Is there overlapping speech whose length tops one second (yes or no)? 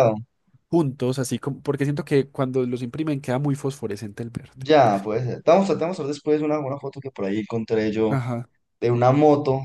no